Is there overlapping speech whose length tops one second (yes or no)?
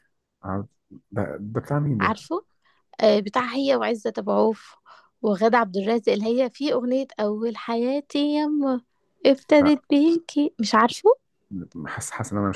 no